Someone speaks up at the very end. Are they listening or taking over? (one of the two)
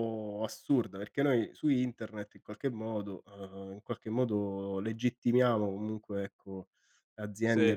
listening